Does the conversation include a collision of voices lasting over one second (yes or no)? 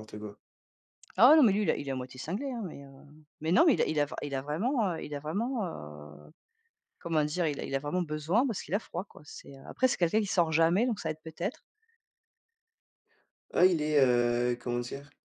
no